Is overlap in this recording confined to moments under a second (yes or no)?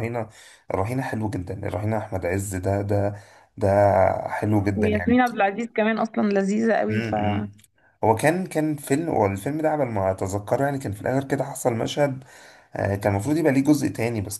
yes